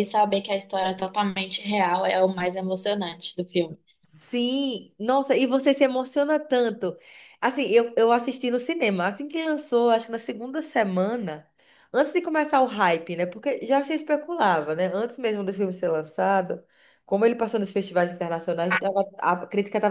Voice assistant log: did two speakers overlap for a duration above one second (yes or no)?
no